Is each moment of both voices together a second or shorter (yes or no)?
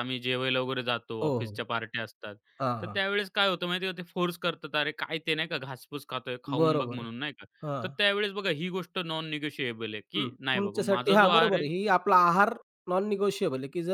no